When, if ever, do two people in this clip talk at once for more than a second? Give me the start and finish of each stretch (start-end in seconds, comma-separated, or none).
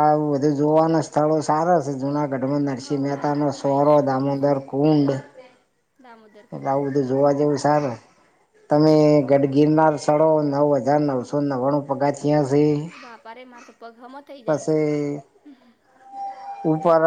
2.8-4.6